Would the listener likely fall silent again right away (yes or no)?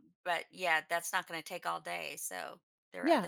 no